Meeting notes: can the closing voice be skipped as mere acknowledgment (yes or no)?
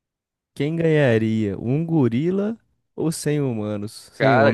no